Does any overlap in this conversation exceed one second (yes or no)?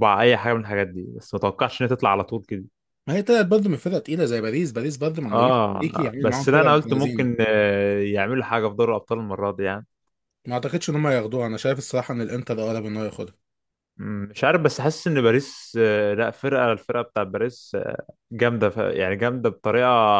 yes